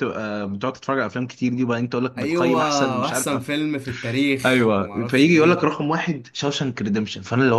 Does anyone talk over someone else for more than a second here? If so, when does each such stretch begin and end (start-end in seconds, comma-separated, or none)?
2.2-3.4, 4.5-5.8